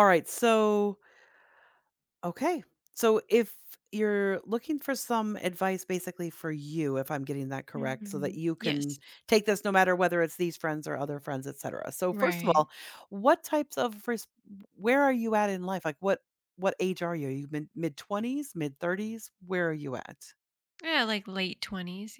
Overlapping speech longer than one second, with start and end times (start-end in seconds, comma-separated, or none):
7.7-9.0